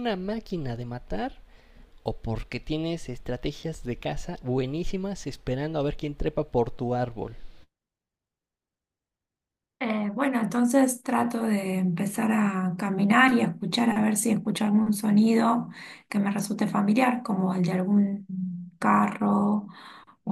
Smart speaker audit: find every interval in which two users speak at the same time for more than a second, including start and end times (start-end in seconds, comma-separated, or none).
none